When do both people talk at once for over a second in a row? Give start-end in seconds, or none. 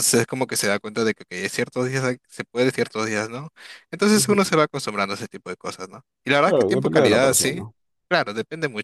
6.4-7.6